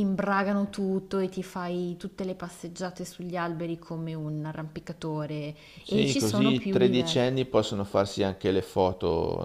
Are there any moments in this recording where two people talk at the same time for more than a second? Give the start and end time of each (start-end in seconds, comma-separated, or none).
5.8-7.2